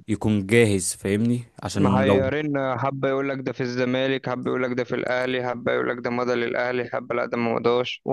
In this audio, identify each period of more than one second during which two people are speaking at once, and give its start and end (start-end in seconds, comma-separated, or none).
none